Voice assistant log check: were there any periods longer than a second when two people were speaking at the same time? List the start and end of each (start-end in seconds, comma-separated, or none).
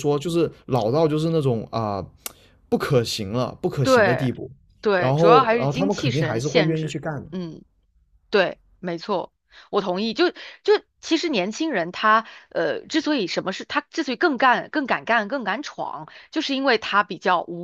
5.0-7.3